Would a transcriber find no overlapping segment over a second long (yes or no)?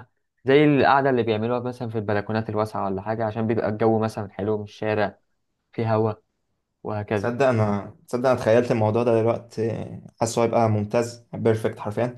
yes